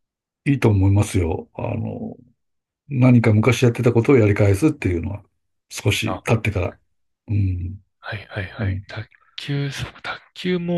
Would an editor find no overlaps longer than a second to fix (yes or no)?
yes